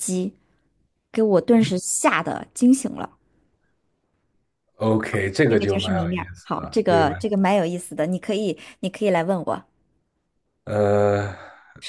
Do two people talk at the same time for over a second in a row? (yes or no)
yes